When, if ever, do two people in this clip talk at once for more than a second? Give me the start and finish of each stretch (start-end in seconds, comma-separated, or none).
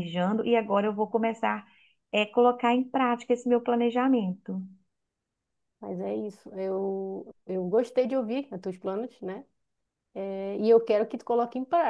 none